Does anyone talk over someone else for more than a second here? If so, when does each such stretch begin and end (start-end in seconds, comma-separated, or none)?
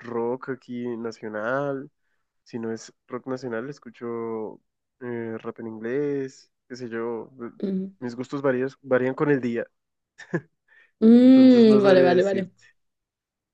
11.2-12.5